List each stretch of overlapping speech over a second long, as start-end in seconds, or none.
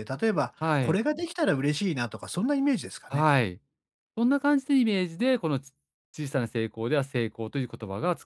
none